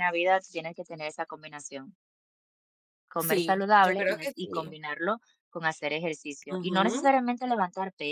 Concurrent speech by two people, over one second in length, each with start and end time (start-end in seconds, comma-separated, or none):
3.2-4.7